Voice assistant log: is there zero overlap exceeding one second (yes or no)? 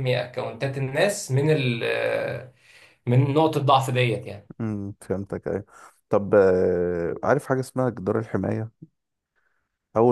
yes